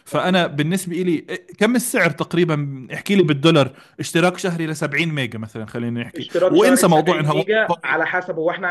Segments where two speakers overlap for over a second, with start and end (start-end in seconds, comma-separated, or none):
6.2-8.1